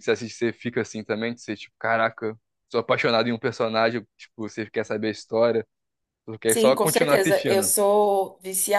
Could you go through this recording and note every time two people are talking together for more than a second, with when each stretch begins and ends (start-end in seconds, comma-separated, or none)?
6.5-7.7